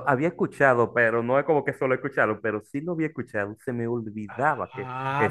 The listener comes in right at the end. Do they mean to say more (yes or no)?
yes